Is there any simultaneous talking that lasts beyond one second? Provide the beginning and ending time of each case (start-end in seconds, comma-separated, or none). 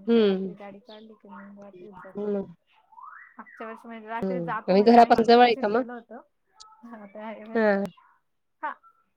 4.2-5.8